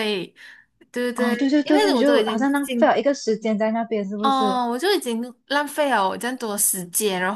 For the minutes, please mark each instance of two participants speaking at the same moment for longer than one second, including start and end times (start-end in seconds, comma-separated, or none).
1.1-3.0